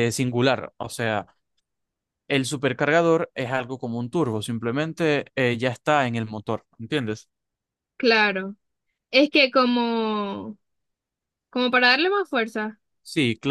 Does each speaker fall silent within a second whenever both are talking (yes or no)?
yes